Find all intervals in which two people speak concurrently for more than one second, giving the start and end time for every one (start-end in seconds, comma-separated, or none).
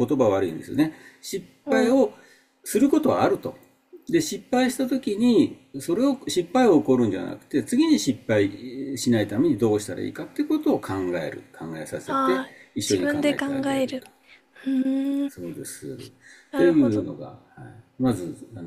12.1-14.0